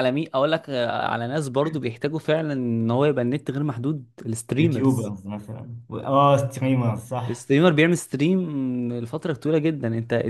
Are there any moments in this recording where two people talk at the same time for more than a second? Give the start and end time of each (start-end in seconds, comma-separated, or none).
none